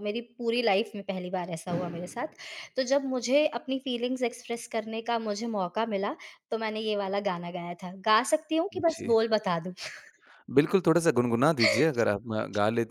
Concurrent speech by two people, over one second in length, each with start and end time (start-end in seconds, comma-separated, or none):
none